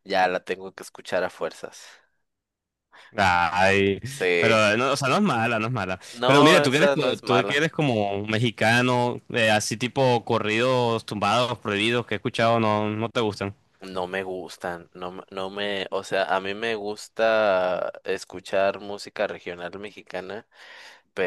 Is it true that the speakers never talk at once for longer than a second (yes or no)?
no